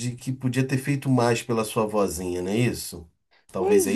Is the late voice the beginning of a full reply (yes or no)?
yes